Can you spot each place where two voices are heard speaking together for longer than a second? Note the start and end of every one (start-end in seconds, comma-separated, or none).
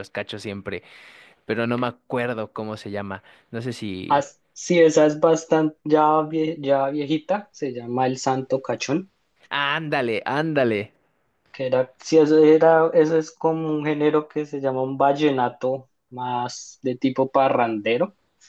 none